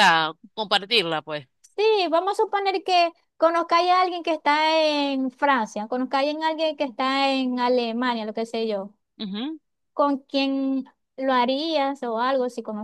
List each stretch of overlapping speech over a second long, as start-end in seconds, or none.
none